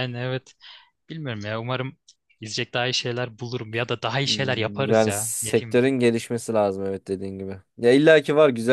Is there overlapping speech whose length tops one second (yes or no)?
yes